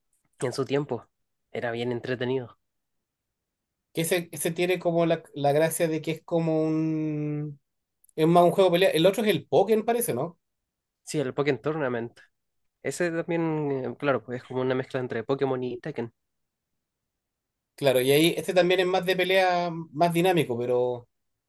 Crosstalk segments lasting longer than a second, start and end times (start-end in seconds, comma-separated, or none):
none